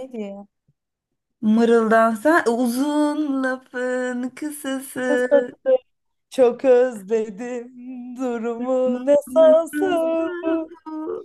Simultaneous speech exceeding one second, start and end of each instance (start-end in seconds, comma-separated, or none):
8.8-10.2